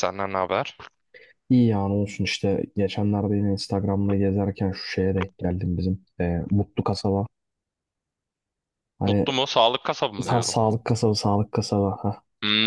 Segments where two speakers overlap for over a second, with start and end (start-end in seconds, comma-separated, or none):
none